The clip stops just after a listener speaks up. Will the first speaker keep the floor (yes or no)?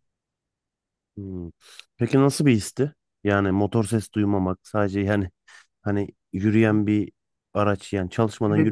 no